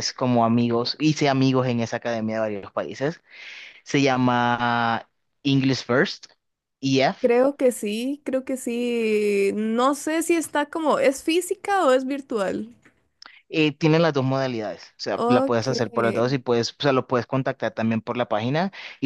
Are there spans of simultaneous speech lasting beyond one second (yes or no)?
no